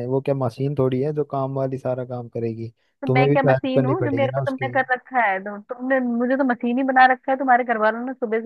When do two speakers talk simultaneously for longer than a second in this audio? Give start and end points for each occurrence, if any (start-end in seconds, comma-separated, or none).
3.0-4.7